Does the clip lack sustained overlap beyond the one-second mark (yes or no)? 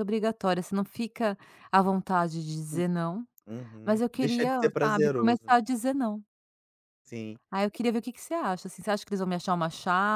no